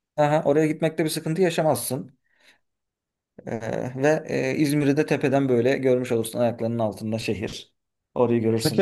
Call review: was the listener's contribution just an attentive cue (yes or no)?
no